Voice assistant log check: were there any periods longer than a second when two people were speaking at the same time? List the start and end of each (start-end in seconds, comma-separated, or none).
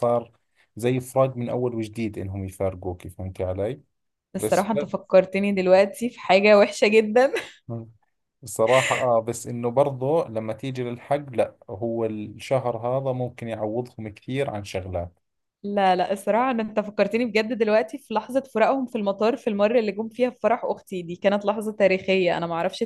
none